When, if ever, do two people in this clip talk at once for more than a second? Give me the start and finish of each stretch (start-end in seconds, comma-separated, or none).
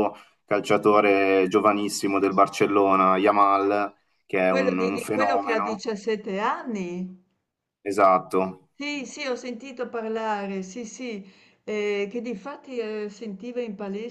4.5-5.9